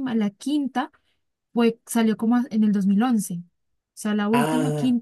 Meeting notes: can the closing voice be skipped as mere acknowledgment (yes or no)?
yes